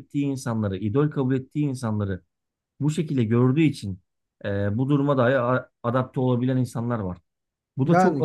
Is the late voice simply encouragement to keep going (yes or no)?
no